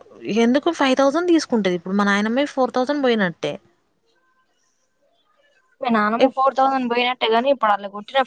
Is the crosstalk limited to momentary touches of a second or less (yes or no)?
yes